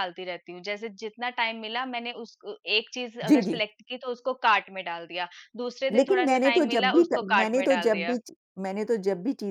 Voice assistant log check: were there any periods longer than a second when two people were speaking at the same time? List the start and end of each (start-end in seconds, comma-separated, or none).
5.9-8.2